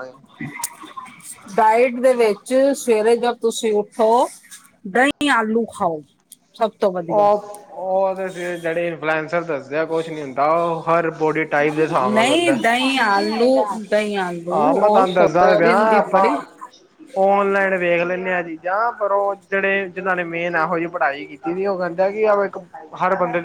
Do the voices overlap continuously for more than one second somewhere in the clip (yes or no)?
yes